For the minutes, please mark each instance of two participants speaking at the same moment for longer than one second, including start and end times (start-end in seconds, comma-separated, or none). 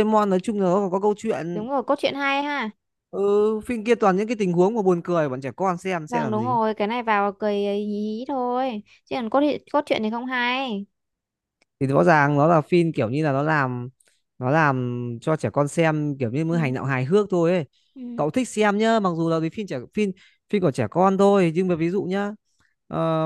none